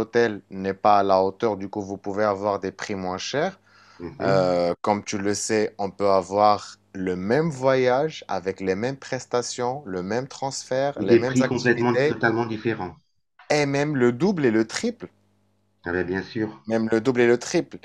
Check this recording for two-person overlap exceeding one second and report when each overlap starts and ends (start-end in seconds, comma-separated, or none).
11.0-12.2